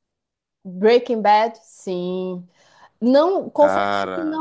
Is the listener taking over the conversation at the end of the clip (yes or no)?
no